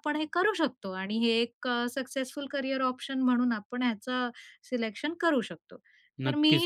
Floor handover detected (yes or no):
yes